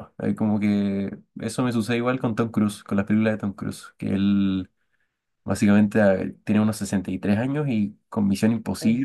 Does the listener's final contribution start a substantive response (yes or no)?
no